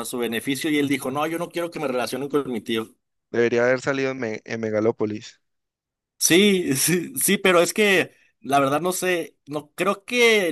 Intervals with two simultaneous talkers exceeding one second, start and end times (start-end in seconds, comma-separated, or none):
none